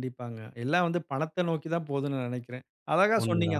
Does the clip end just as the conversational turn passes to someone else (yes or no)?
no